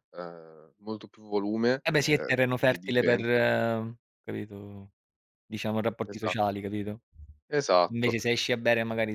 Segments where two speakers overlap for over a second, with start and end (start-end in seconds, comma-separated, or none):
1.8-3.4